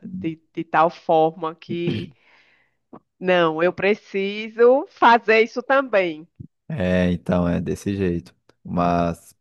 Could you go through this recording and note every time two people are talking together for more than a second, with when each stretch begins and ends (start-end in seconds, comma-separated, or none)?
none